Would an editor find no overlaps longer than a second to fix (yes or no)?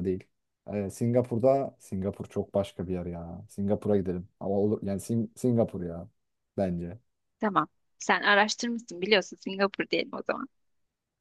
yes